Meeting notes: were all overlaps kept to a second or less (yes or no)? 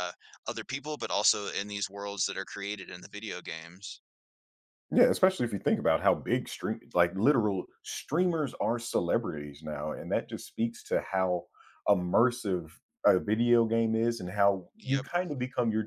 yes